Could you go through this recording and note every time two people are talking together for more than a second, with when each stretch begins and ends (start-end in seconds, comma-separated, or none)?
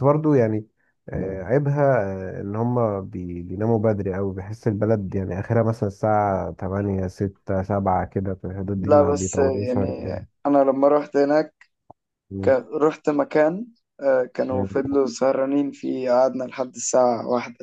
8.8-10.1